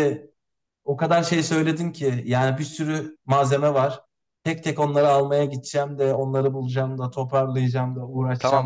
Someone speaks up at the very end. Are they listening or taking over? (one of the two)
taking over